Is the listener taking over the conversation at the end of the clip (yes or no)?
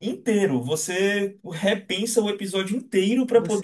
no